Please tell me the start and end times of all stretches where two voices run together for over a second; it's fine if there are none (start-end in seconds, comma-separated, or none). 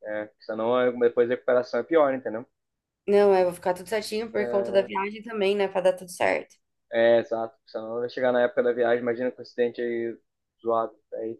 none